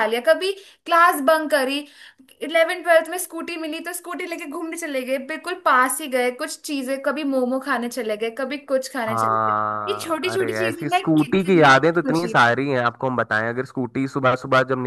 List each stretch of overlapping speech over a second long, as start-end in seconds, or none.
9.1-12.6